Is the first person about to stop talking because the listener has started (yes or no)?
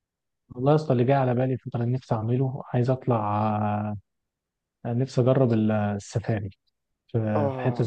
no